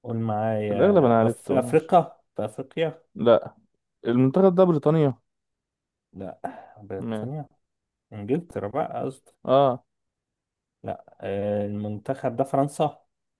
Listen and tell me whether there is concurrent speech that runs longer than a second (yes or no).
yes